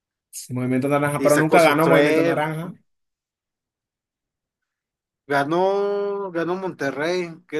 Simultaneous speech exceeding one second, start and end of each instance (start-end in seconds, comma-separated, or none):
1.2-2.4